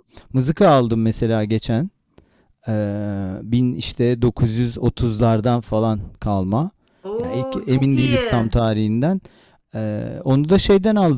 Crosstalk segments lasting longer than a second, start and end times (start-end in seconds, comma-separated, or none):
7.2-8.5